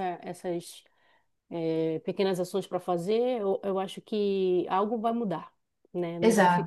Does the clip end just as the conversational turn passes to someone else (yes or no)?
no